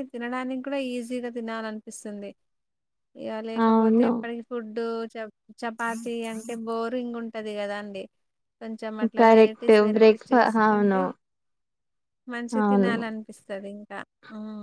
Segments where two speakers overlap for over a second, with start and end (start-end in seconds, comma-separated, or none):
9.2-11.0